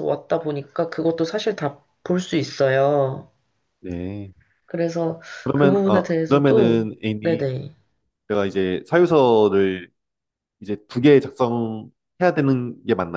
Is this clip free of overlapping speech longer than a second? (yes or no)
no